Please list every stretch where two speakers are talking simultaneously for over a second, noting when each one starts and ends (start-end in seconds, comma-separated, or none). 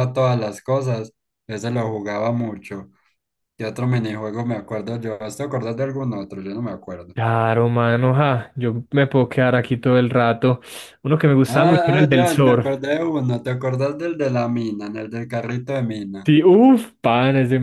11.5-12.7